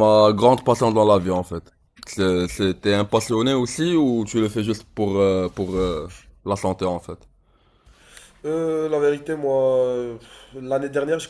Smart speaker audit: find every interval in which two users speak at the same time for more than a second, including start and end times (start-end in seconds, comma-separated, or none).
none